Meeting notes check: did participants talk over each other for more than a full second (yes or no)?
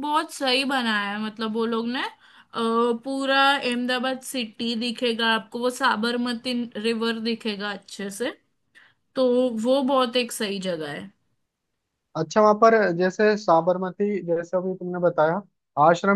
no